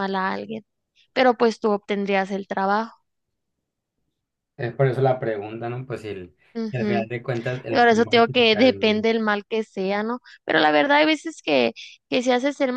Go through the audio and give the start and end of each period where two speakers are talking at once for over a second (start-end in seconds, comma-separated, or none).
7.7-9.1